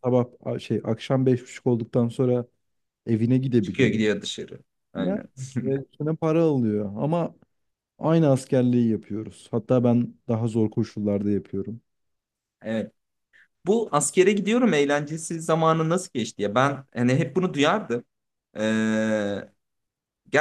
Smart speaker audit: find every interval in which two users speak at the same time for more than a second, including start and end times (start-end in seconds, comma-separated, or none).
none